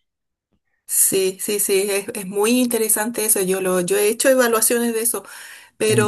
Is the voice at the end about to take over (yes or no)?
no